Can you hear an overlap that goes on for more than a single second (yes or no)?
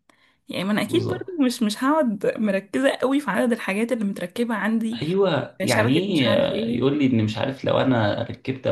yes